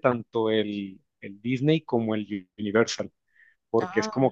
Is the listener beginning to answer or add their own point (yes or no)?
no